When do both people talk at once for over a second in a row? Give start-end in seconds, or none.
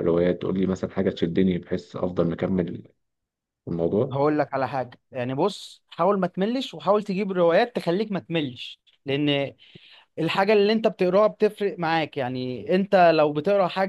none